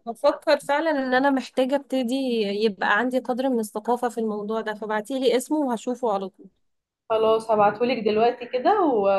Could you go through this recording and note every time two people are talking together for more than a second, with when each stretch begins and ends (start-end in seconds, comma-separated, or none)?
none